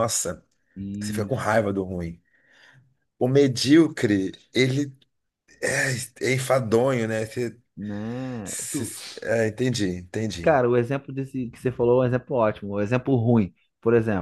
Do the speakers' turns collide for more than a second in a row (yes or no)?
no